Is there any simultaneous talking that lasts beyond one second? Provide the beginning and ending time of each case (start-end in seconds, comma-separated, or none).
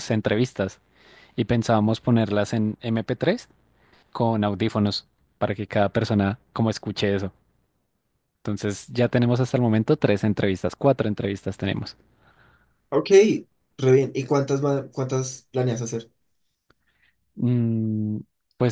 none